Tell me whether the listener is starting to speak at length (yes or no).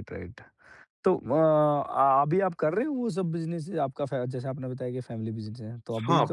yes